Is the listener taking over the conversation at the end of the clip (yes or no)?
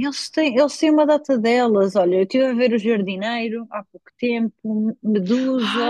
yes